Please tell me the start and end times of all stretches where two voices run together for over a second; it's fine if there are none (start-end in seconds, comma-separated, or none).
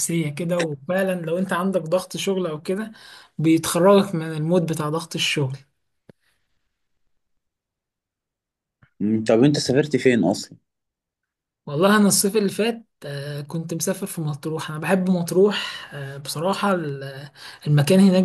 none